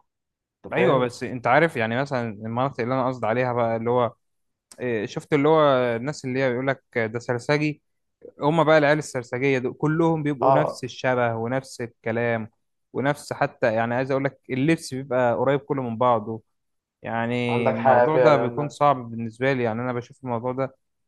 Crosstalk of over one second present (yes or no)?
yes